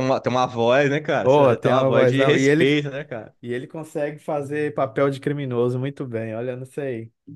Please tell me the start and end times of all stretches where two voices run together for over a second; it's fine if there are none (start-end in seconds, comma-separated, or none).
1.2-2.8